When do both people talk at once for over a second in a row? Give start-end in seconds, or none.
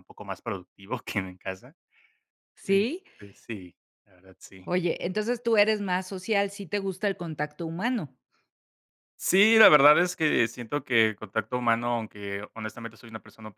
none